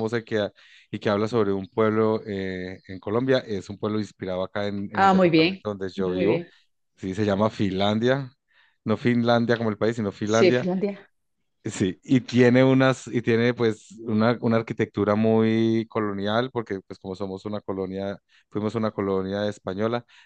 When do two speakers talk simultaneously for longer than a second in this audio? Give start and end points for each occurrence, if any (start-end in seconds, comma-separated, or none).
4.9-6.5